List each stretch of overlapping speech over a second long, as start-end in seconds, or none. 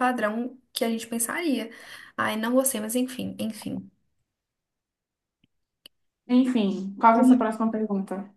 none